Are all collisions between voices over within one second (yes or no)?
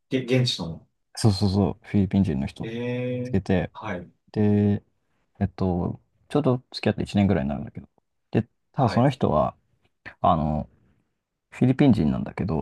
yes